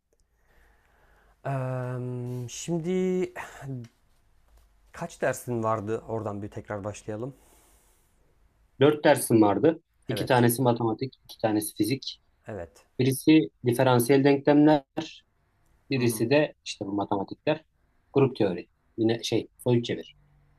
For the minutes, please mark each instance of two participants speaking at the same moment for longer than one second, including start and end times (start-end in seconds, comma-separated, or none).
none